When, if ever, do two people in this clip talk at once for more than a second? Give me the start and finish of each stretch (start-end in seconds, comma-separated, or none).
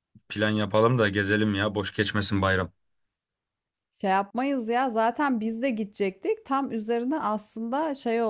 none